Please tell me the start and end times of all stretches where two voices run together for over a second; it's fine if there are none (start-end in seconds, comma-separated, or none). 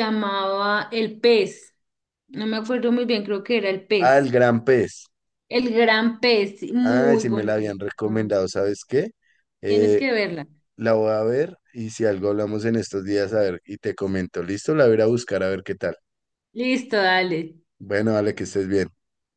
6.8-8.3